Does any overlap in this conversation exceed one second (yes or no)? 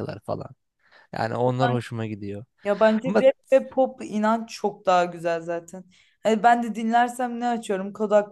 no